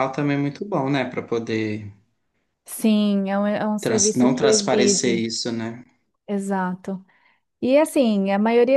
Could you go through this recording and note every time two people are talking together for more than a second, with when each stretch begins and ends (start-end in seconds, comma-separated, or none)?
3.8-5.2